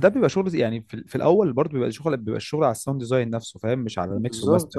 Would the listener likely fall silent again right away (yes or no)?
no